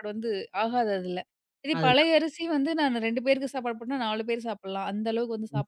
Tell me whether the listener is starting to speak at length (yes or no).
no